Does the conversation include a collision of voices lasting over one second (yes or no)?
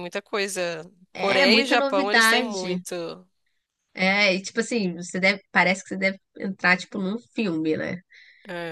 yes